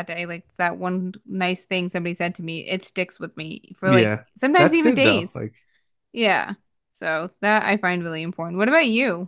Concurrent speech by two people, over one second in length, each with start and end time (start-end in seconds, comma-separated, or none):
3.8-5.5